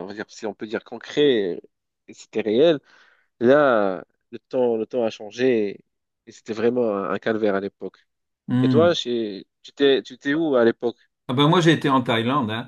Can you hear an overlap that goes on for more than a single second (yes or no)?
no